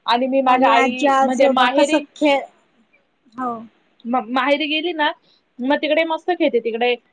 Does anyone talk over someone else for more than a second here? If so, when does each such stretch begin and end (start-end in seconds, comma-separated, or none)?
0.5-2.0